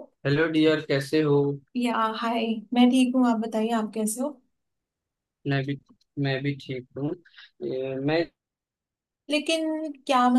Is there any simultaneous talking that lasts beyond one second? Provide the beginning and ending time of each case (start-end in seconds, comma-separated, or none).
none